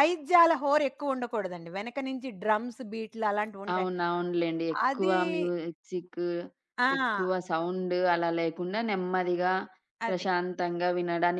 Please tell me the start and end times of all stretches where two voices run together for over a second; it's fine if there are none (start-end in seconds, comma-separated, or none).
none